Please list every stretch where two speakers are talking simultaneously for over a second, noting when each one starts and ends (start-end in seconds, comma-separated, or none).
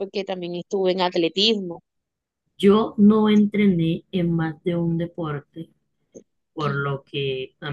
none